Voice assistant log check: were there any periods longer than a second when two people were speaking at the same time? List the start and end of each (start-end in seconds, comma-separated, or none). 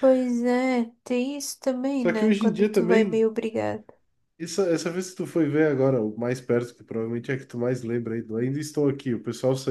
2.0-3.3